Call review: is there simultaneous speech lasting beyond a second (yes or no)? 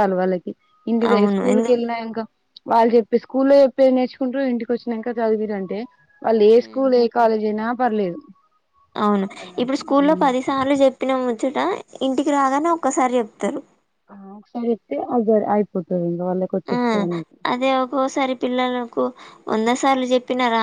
no